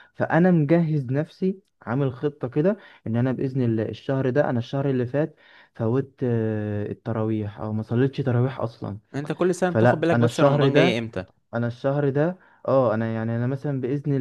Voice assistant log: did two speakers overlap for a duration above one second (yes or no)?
yes